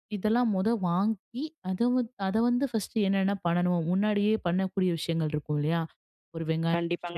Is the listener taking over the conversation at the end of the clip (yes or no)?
yes